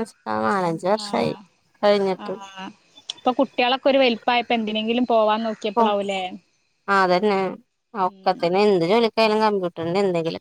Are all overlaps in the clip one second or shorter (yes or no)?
yes